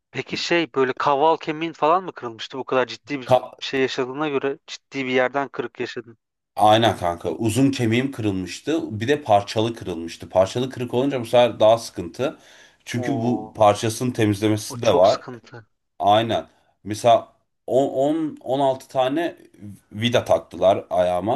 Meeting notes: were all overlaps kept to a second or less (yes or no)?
yes